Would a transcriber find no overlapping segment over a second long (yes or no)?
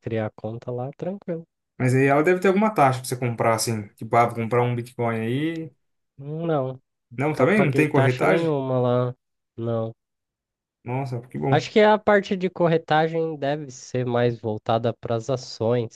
no